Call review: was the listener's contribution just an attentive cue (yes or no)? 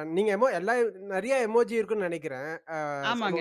yes